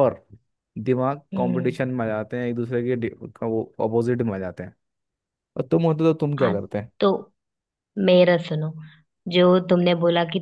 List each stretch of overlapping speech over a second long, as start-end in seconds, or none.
none